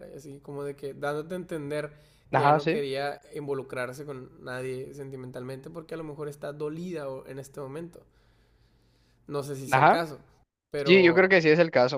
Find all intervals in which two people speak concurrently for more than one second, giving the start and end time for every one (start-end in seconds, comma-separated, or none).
none